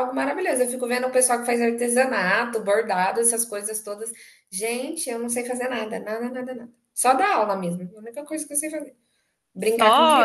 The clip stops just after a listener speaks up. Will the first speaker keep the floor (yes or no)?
no